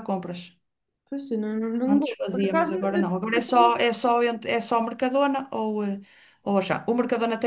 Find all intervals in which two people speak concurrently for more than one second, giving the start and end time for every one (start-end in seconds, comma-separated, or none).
1.9-3.8